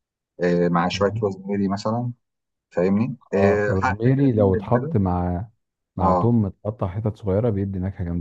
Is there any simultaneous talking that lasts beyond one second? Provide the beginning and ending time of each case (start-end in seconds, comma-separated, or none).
3.3-5.0